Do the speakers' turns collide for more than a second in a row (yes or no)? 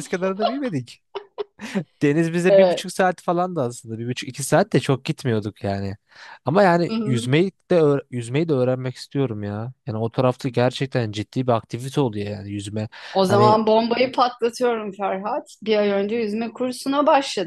no